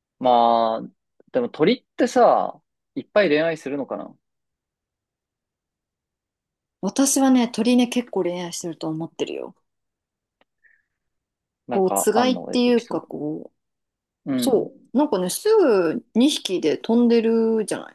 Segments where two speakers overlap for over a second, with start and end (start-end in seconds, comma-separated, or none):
11.7-13.1